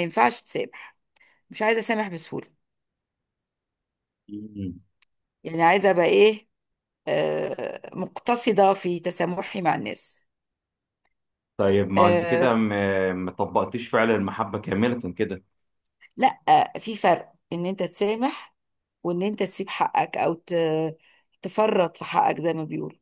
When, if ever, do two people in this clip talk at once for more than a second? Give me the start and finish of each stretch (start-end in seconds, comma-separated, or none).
none